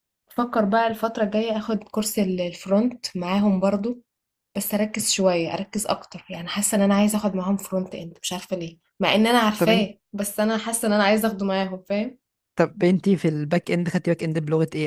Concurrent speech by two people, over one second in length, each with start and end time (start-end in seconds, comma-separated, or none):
none